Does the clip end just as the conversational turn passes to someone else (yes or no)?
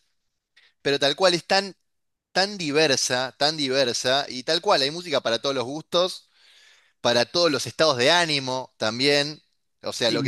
no